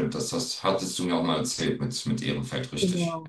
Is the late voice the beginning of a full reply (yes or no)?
yes